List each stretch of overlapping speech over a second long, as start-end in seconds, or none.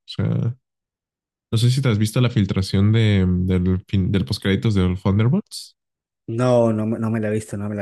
none